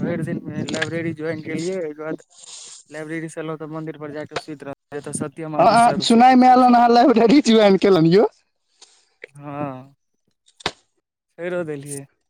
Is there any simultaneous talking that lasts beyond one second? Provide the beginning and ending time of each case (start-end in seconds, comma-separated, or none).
none